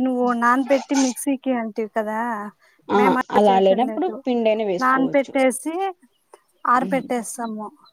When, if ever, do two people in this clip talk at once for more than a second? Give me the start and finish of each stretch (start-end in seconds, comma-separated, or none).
none